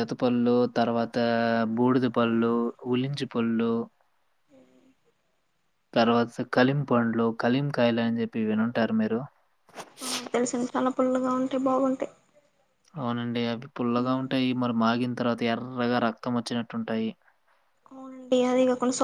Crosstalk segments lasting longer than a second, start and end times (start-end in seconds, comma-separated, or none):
none